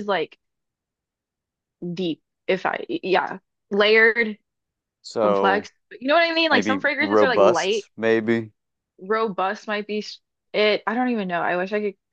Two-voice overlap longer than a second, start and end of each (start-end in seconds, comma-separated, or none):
6.5-7.9